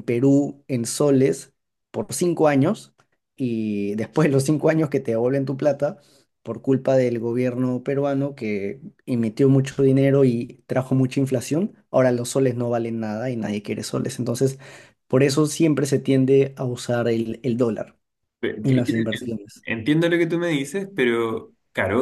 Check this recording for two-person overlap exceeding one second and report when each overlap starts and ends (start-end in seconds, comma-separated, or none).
none